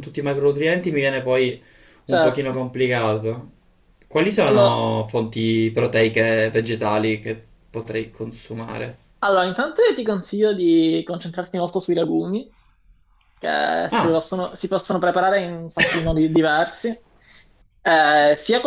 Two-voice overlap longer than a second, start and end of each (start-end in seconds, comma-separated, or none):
none